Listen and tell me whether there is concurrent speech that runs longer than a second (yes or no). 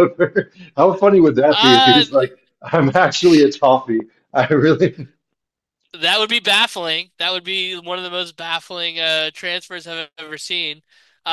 no